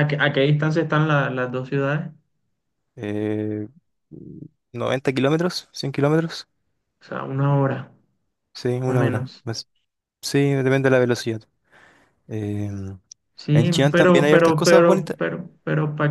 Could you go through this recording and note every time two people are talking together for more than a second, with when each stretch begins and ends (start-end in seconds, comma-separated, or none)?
13.5-15.2